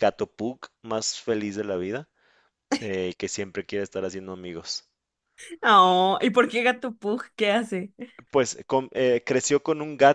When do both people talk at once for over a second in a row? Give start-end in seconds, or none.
none